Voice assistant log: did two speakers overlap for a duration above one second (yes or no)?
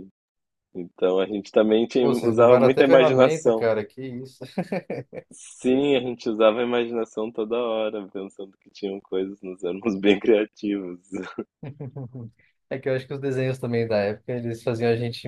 yes